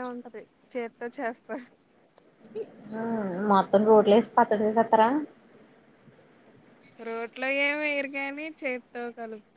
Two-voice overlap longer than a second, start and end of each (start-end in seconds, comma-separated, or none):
none